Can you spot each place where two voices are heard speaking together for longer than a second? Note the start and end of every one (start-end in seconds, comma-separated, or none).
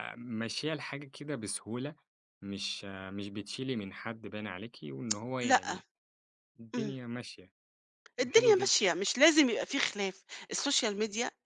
none